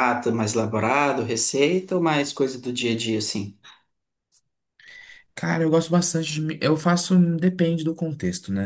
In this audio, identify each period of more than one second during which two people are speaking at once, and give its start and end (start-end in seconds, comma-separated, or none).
none